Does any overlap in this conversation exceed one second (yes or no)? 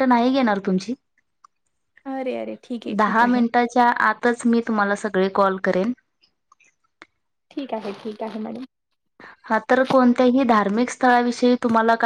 no